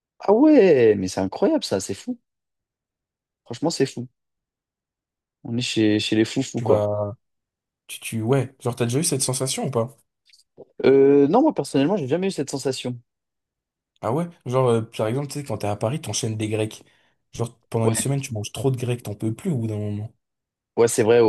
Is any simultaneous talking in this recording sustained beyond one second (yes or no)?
no